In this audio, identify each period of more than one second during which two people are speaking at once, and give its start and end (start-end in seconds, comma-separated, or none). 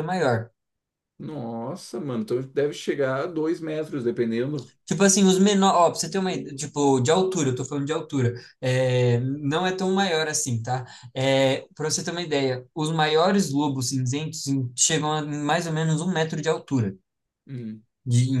none